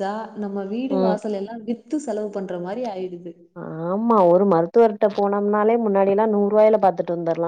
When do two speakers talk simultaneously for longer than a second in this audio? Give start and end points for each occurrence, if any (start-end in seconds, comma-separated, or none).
none